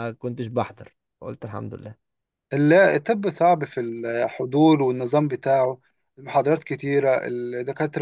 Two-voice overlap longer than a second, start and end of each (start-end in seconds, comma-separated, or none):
none